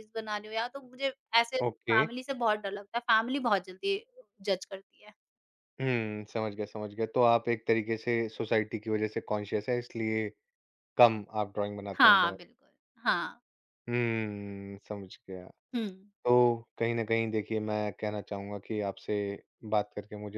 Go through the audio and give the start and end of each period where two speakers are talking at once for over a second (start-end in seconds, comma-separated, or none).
none